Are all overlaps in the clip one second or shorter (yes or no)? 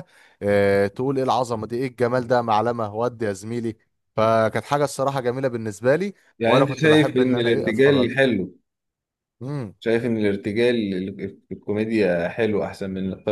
no